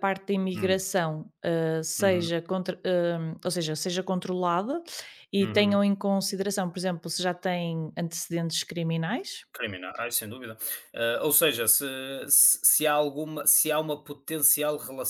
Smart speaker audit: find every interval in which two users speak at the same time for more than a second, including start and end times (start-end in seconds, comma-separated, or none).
none